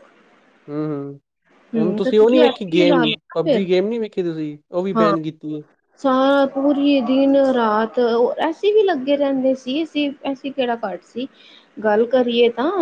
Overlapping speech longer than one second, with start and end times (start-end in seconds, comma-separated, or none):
1.8-3.7